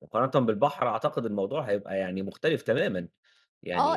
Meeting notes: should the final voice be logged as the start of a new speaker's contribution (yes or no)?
yes